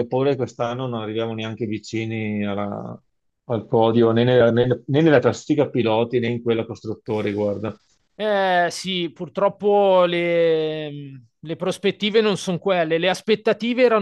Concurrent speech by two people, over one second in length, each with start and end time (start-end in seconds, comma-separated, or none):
none